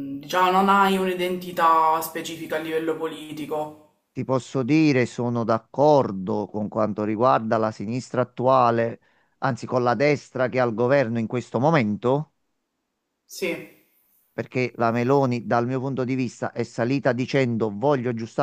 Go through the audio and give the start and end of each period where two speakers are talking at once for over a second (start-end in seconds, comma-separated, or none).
none